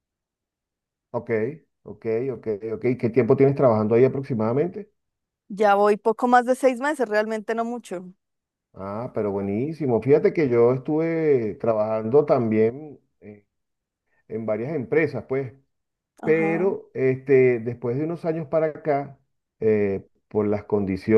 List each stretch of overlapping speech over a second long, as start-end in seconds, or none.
none